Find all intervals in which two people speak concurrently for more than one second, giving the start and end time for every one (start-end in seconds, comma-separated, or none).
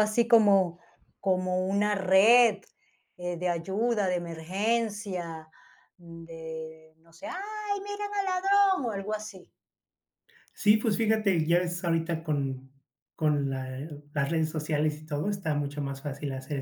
none